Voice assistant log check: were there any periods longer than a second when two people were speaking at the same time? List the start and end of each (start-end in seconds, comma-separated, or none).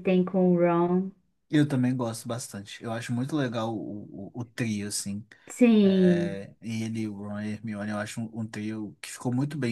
none